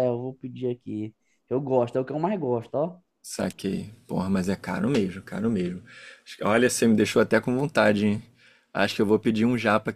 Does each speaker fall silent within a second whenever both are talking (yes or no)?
yes